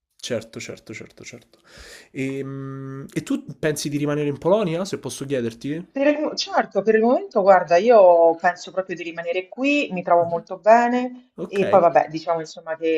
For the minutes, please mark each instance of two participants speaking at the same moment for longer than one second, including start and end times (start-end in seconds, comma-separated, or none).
none